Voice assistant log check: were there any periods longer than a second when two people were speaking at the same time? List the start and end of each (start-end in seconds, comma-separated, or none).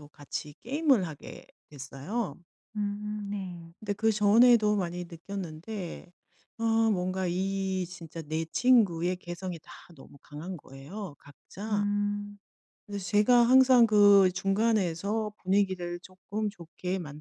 none